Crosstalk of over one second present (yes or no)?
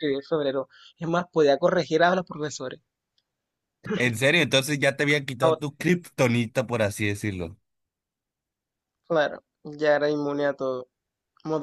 no